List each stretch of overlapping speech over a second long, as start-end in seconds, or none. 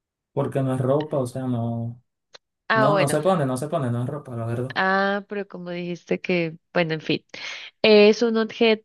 none